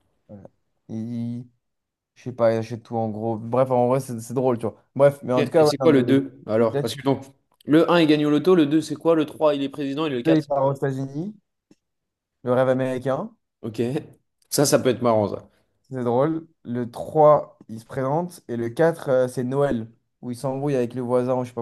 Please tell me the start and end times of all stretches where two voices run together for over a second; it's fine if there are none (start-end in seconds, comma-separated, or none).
5.4-7.0